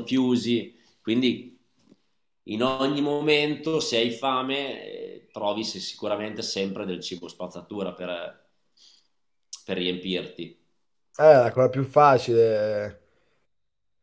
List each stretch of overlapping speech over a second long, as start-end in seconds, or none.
none